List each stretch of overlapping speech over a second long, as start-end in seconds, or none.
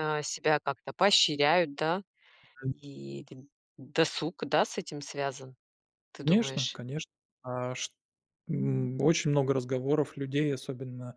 none